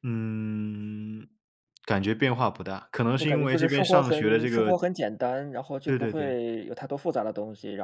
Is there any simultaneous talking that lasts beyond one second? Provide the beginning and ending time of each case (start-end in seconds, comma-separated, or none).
3.2-4.8